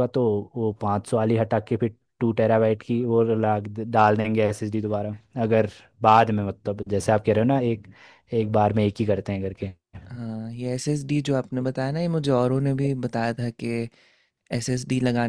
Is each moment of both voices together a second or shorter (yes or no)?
yes